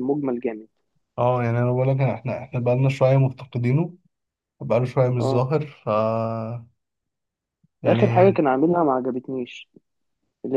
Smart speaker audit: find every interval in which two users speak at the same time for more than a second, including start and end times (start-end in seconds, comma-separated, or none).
none